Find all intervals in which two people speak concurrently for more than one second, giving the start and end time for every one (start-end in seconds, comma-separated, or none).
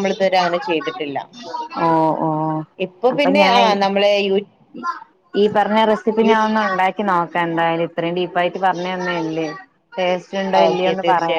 none